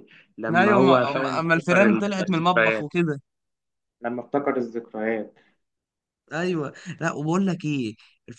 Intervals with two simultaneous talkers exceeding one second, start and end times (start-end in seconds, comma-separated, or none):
0.6-2.9